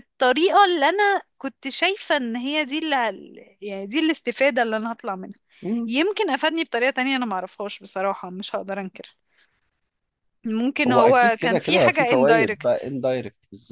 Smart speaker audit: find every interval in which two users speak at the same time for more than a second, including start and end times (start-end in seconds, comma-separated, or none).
10.9-13.0